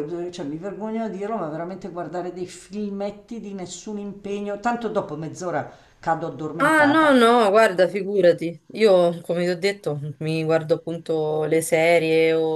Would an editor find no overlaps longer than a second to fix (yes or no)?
yes